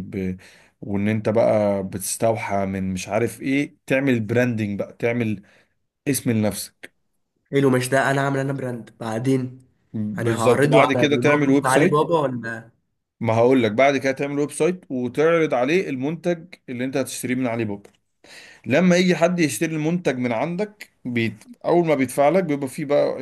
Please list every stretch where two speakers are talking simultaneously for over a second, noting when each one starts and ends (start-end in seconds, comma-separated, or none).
10.2-12.0